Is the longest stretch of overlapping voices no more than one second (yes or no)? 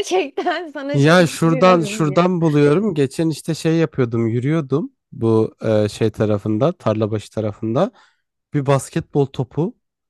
no